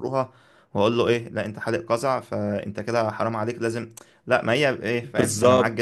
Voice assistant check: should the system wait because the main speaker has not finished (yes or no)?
no